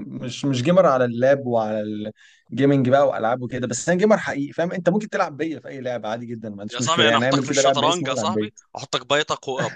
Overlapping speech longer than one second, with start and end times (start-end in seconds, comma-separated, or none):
6.7-8.5